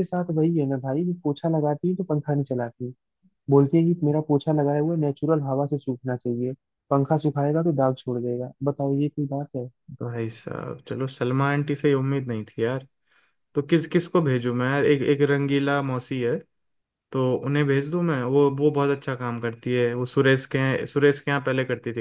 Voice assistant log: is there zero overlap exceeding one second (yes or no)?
yes